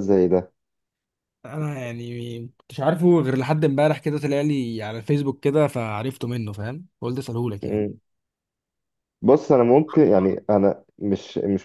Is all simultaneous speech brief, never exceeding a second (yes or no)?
yes